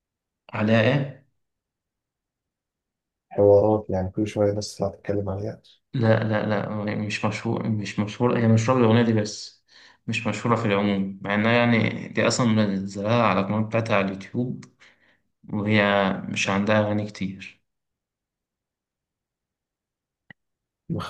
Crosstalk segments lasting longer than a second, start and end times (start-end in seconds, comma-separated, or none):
none